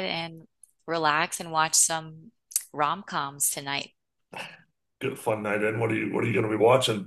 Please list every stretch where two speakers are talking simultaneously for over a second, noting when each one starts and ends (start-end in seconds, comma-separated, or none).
none